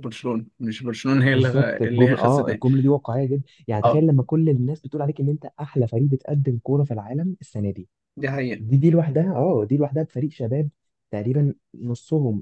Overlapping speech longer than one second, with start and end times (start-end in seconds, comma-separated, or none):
1.2-2.6